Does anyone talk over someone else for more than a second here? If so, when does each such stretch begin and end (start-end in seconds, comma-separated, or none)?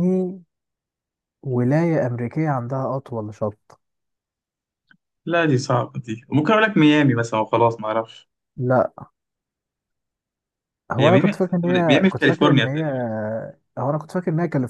11.0-12.8